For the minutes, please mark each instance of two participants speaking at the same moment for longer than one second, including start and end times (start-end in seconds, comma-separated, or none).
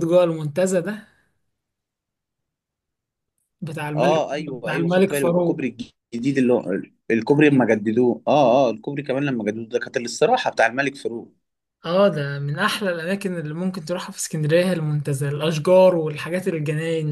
4.0-5.6